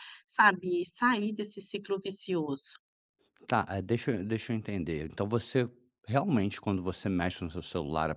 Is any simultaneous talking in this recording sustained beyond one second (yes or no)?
no